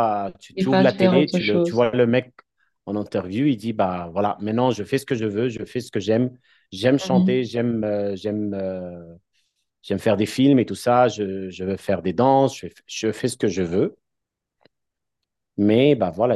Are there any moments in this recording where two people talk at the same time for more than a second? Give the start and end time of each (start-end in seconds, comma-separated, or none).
0.5-1.9